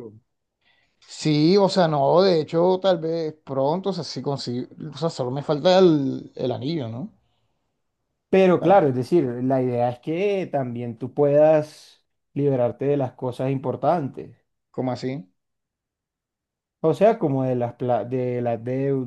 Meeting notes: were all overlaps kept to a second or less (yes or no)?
yes